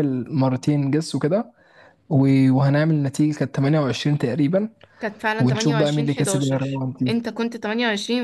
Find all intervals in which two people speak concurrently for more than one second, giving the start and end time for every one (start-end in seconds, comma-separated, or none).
5.4-7.1